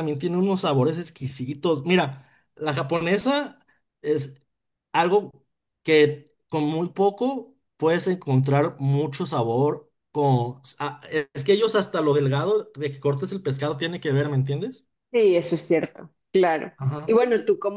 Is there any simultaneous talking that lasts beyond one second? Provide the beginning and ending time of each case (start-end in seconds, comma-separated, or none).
none